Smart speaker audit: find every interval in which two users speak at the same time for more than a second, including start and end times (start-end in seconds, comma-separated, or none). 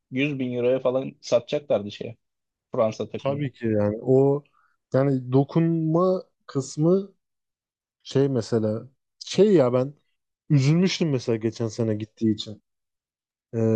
none